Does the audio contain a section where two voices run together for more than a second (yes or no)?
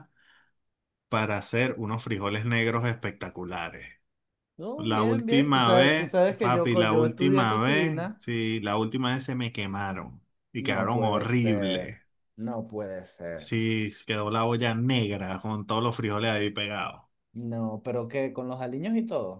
yes